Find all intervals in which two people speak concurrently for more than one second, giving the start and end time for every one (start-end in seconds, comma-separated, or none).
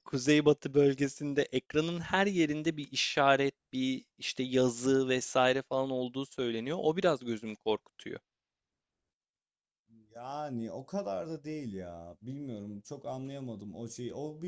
none